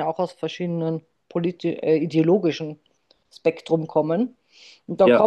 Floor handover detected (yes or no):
no